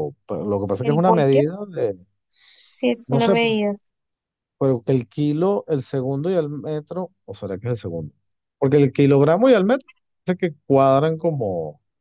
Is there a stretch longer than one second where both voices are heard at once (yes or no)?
no